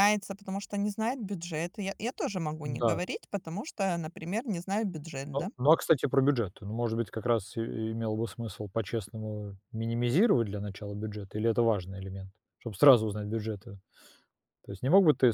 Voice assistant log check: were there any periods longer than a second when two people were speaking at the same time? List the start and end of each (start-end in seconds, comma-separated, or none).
none